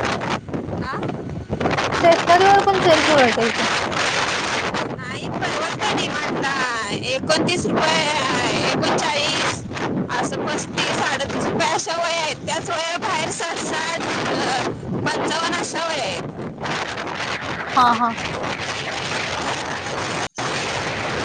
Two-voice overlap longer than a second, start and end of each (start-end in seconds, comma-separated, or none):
none